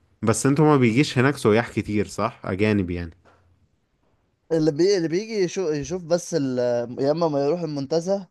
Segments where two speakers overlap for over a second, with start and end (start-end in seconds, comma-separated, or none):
none